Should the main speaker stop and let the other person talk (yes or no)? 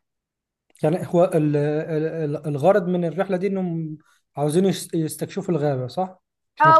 yes